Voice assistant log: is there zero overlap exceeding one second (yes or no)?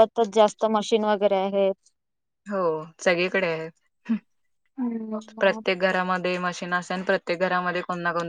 yes